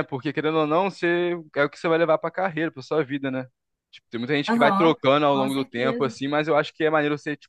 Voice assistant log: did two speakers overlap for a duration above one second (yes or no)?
yes